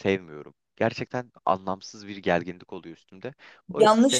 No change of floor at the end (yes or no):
no